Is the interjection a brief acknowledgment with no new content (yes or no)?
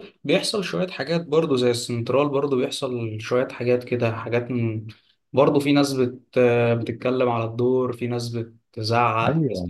no